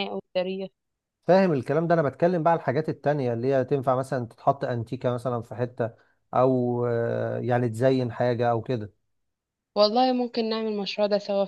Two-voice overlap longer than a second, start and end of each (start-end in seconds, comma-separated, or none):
none